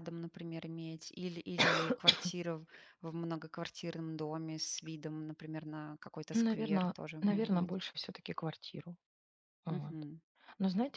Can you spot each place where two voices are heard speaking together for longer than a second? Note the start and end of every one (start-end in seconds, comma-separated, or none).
6.3-7.8